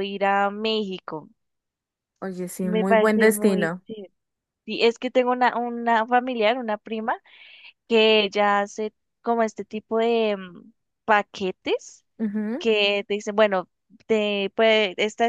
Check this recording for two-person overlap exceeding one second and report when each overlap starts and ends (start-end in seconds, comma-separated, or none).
2.6-3.8